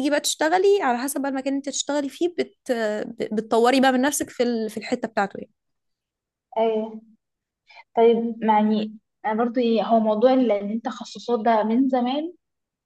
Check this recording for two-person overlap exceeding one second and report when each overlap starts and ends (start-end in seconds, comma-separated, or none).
none